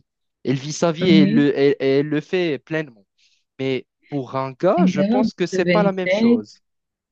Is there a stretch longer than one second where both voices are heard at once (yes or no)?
yes